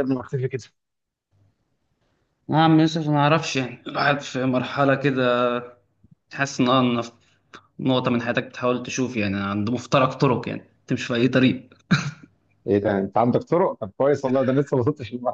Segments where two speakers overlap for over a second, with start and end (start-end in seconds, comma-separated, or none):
none